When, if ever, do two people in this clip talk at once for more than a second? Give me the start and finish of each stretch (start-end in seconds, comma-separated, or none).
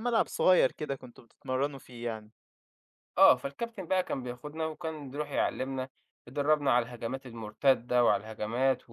none